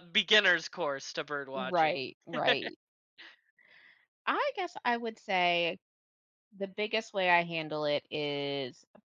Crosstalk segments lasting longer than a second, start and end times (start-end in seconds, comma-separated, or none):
none